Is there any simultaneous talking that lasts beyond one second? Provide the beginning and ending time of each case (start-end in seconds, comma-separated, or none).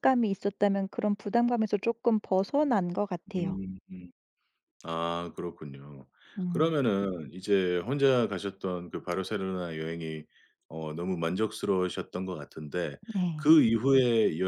none